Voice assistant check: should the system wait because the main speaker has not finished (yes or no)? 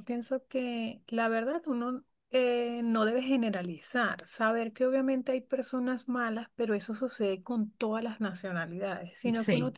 yes